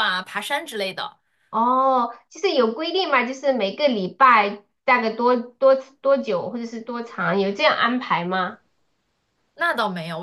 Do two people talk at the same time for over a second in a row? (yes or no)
no